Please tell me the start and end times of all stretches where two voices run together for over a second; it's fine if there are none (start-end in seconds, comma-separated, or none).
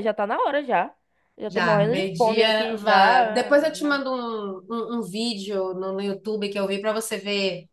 1.5-3.6